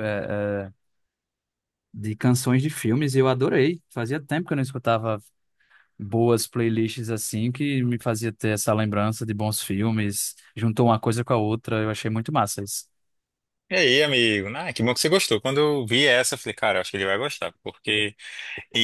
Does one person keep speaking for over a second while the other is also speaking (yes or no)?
no